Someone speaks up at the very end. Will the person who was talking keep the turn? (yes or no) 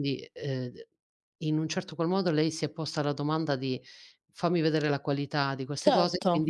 yes